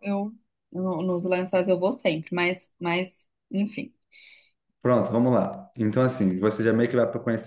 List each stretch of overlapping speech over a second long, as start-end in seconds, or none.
none